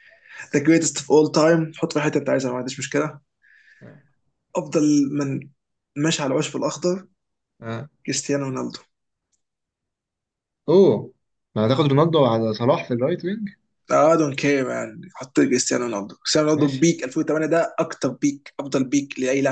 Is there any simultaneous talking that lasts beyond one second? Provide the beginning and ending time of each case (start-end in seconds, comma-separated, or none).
none